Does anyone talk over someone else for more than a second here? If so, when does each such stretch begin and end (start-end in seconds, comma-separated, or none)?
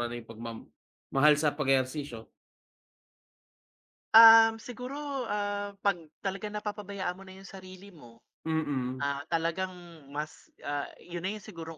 none